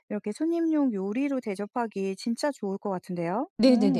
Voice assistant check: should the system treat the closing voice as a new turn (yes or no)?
yes